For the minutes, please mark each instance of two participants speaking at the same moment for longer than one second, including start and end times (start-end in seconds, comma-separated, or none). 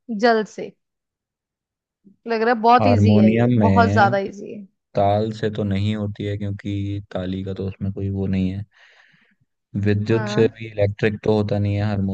2.8-4.1